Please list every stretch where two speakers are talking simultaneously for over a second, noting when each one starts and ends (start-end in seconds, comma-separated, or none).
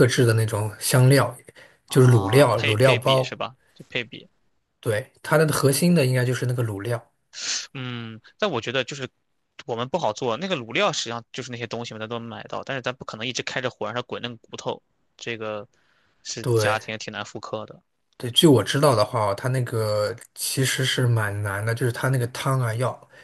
1.9-3.4